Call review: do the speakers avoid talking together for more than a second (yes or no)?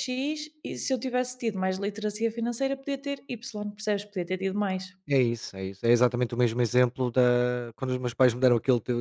yes